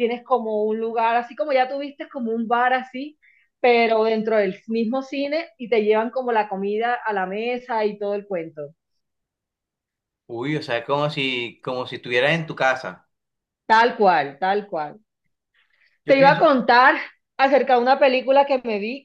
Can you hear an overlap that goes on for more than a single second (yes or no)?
no